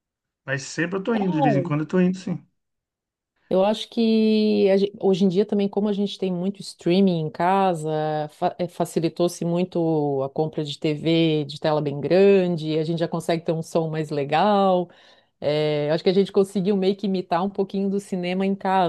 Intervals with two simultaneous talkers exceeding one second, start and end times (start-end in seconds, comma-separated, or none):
none